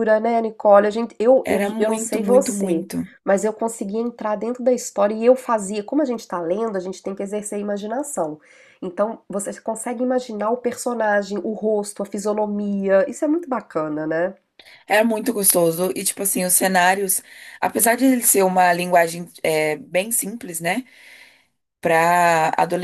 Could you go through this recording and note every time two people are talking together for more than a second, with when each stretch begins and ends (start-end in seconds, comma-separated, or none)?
1.4-2.9